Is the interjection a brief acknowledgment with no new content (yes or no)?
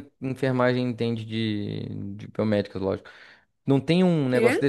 yes